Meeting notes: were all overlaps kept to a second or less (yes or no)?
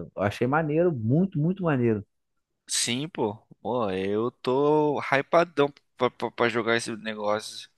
yes